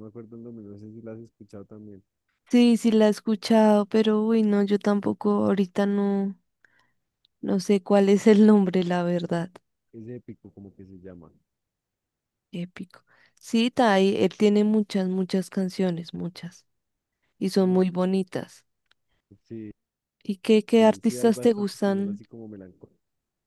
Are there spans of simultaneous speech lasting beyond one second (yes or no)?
yes